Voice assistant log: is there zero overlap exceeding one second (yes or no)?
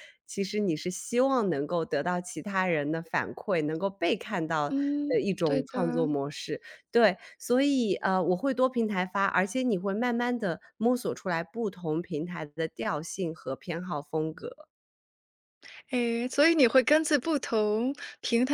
no